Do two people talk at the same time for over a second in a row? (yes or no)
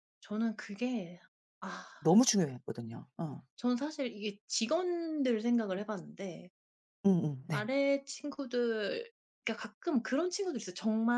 no